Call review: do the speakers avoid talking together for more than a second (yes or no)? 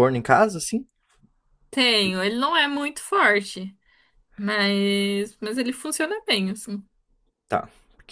yes